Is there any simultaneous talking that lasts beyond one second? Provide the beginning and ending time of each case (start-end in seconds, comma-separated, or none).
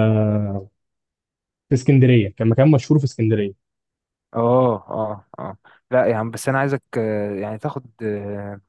none